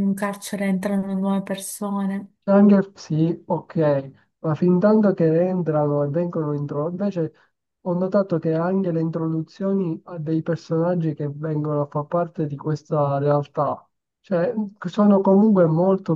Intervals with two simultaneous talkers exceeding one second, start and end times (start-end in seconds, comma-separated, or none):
none